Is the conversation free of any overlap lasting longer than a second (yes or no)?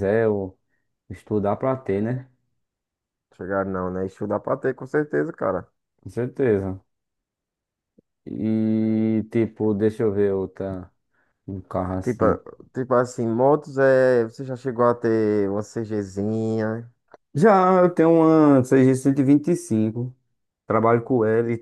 yes